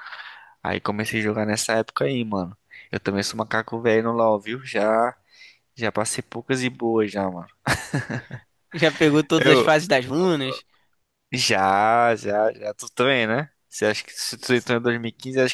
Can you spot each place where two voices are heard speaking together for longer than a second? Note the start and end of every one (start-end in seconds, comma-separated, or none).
none